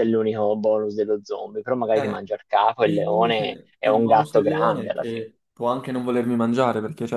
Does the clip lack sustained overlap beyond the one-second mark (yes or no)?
no